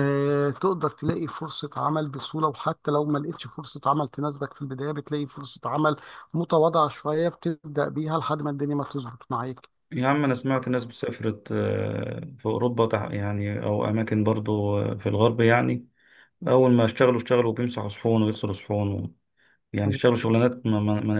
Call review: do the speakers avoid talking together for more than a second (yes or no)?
yes